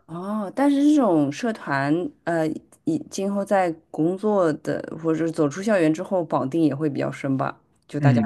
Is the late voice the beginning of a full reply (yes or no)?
yes